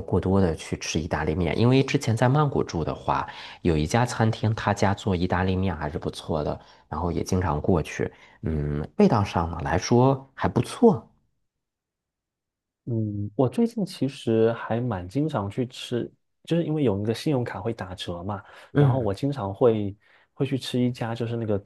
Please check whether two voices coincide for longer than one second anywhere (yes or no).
no